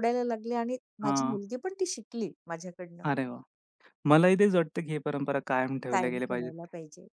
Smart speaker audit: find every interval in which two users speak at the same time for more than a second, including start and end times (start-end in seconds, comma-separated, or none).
none